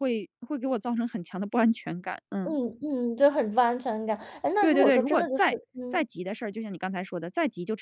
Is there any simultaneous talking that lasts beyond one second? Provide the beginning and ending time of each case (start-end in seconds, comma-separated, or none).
4.6-6.0